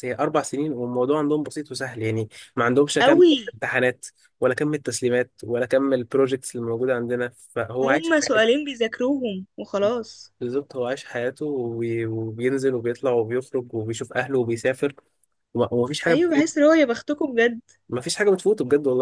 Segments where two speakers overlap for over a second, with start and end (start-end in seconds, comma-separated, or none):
none